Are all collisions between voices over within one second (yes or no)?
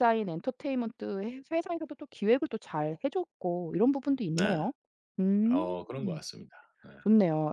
yes